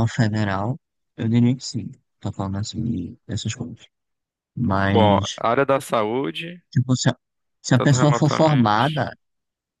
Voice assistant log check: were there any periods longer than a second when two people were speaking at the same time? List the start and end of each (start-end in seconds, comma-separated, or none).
7.7-9.1